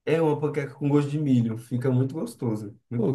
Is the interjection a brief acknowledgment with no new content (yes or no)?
no